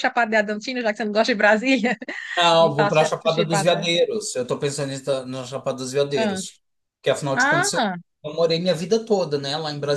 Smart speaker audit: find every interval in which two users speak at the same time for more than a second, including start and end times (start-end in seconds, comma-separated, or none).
2.6-3.9